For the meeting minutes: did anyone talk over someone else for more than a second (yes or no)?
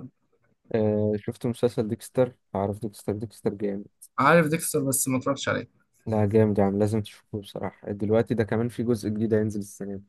no